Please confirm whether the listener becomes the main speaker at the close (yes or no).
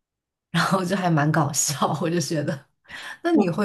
no